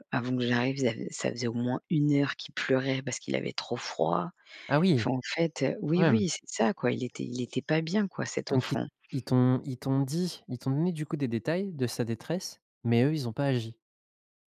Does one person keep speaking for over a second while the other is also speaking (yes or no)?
no